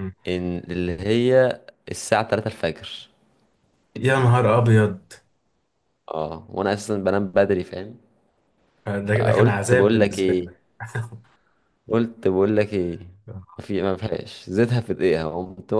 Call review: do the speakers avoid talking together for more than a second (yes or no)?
no